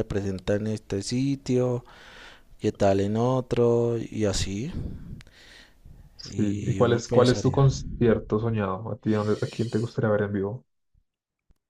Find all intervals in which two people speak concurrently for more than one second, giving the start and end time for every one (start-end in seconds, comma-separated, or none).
6.2-7.7